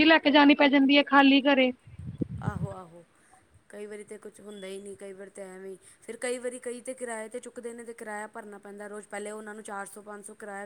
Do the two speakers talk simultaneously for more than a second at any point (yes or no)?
no